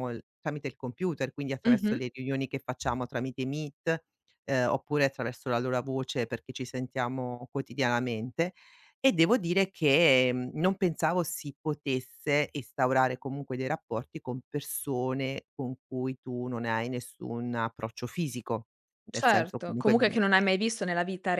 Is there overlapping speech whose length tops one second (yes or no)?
yes